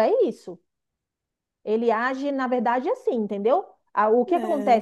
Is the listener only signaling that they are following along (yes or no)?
yes